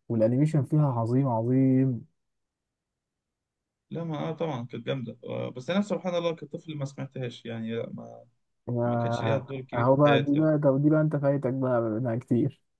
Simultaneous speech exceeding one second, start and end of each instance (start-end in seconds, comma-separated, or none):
8.8-10.5